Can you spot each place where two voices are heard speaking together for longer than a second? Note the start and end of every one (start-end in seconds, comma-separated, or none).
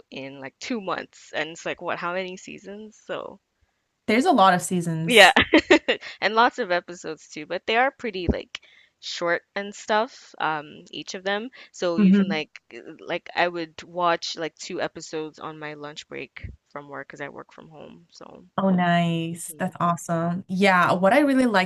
none